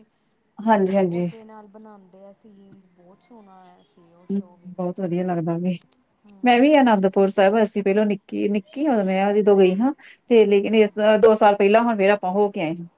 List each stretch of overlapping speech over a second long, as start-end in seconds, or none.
none